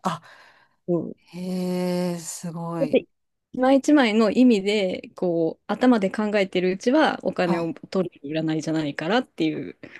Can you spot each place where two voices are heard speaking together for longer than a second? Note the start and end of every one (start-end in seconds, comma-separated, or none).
none